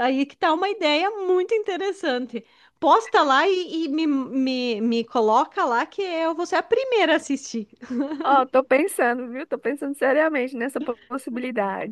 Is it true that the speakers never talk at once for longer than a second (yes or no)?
yes